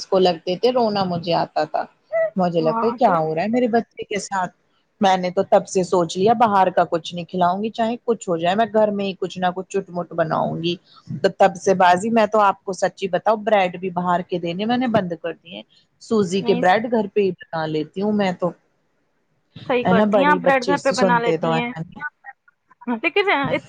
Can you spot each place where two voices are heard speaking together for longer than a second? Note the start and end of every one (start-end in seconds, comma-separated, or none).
19.8-21.5